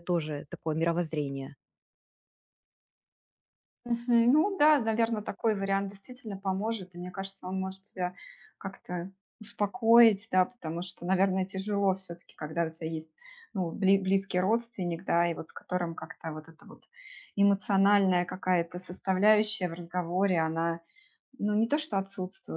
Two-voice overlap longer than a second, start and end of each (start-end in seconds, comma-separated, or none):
none